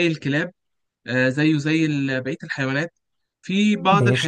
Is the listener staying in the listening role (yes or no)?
yes